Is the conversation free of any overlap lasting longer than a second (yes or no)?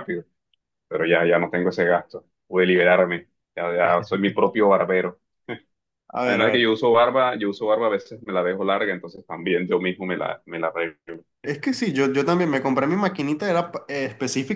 yes